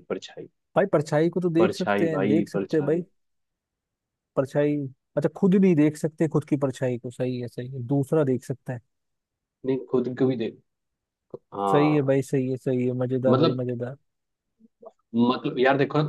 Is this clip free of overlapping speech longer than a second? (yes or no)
no